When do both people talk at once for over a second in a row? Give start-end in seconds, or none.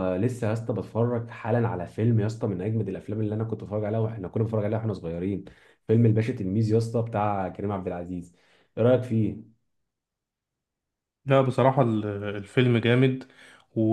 none